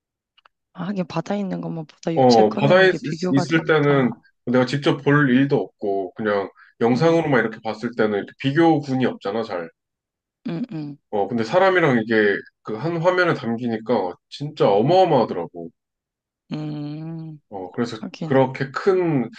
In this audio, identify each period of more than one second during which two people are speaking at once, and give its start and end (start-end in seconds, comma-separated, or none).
2.1-4.1